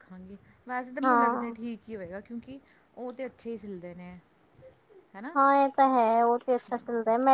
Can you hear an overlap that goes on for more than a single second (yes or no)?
no